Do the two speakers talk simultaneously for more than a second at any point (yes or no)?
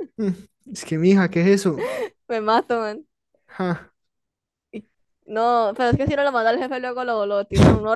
no